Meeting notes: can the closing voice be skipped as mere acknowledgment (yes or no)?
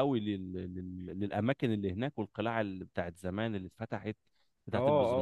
no